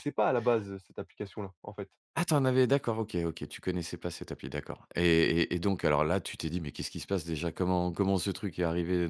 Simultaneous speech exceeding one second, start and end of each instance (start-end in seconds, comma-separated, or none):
none